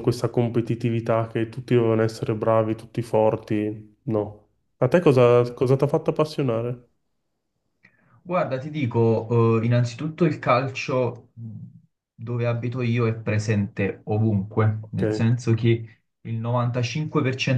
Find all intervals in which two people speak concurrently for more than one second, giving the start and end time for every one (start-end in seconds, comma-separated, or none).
none